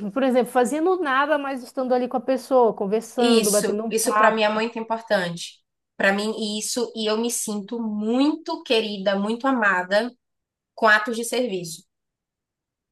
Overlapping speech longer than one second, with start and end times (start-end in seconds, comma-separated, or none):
3.2-4.6